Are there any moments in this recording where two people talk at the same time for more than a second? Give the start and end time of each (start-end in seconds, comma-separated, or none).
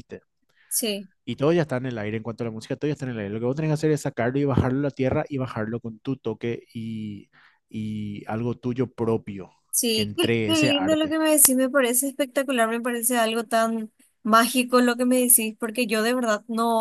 9.9-11.2